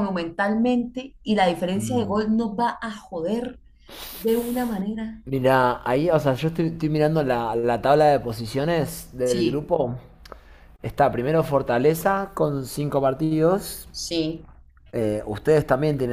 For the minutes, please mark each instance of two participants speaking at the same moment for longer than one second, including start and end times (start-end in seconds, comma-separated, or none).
none